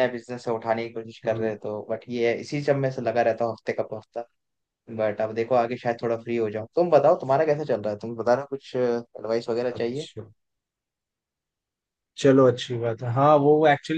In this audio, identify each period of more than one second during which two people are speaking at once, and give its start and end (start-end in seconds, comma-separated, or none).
none